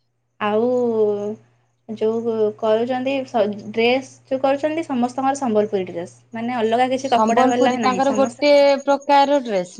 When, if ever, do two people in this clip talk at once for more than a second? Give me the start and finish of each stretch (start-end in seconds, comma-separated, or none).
7.1-8.5